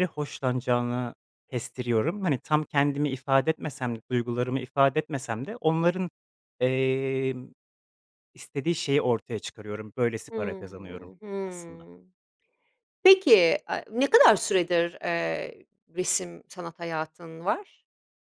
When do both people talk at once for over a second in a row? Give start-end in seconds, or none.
10.3-11.9